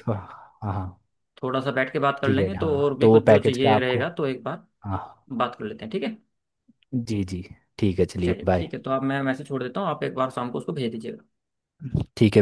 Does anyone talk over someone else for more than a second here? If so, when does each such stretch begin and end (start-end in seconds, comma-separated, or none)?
2.2-4.0